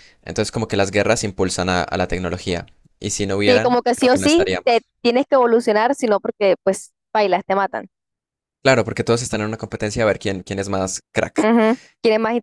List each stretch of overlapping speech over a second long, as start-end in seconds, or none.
3.4-4.9